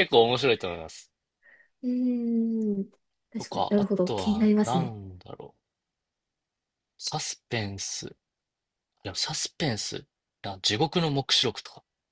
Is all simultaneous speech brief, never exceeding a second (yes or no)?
no